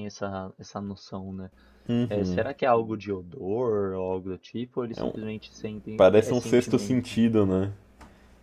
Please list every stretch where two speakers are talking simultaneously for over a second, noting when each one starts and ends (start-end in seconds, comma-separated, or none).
6.0-7.2